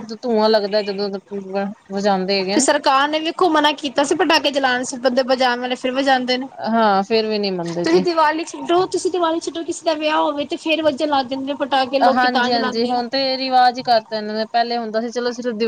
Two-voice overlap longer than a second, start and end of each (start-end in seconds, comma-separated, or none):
none